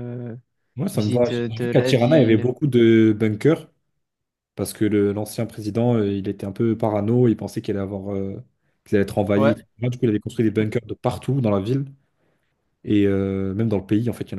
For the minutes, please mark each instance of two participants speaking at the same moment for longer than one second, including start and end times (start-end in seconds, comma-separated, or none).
0.9-2.5